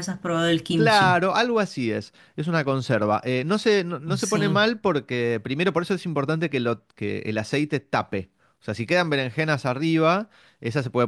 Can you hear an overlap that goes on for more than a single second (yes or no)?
no